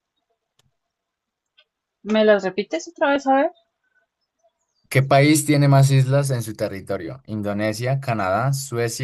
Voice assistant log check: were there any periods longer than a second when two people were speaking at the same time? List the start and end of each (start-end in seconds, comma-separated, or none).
none